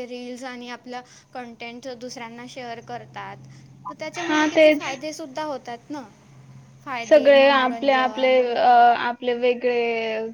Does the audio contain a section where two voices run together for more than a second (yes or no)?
yes